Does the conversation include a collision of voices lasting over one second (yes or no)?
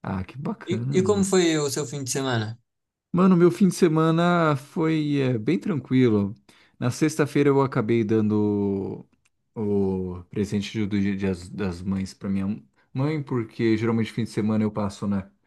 no